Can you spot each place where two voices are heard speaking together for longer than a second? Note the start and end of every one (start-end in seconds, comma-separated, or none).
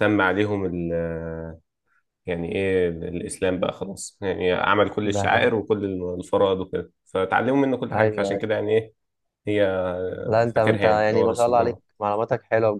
10.5-11.8